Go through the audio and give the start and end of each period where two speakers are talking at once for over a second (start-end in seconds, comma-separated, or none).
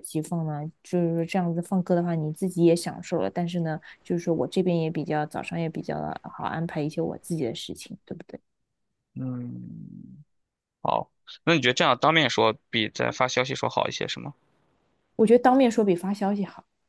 none